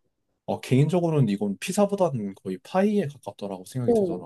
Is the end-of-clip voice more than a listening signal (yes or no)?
yes